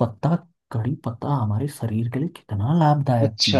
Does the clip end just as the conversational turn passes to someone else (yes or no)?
yes